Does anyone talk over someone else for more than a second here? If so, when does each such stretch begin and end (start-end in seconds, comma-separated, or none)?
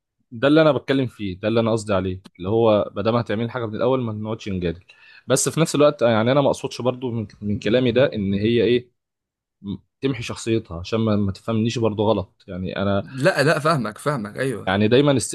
none